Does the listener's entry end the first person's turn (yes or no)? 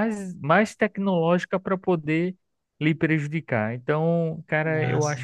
no